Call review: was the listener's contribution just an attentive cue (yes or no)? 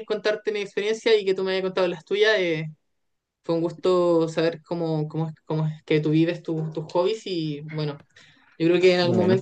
yes